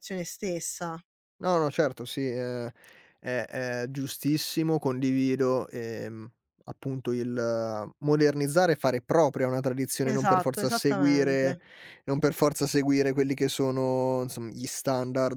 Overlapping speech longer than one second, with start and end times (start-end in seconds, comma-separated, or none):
10.0-11.6